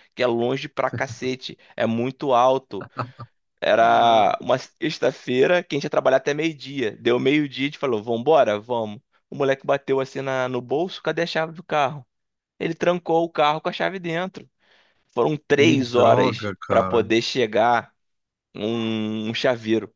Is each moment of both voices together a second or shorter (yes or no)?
no